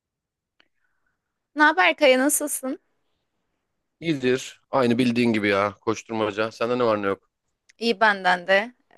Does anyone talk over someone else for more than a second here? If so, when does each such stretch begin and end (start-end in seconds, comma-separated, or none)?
none